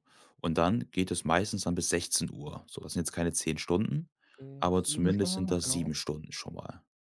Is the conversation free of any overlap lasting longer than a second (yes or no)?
no